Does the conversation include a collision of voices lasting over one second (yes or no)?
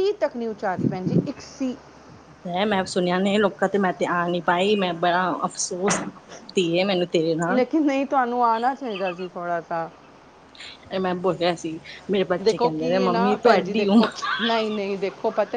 no